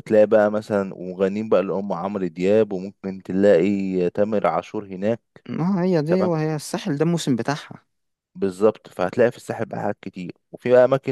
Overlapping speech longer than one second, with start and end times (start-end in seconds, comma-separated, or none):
none